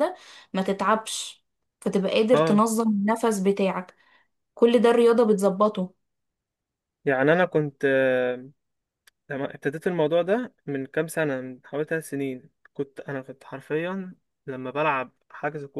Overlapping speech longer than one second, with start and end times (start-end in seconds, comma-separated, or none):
none